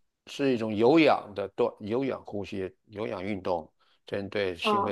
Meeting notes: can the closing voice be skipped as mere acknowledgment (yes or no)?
no